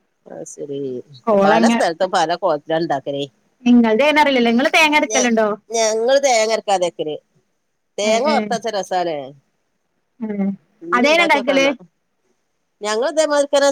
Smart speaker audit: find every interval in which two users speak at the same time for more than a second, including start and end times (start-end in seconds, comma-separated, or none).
none